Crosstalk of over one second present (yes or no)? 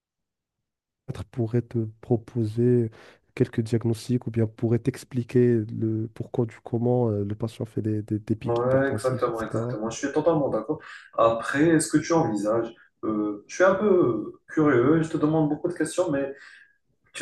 yes